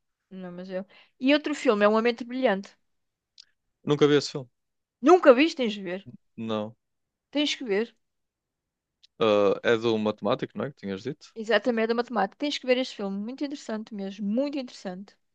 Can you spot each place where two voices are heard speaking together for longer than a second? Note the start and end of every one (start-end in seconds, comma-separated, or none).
none